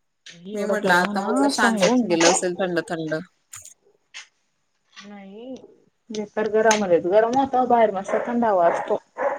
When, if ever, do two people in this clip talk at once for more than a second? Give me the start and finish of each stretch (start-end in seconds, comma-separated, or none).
0.5-2.4